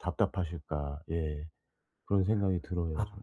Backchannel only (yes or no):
no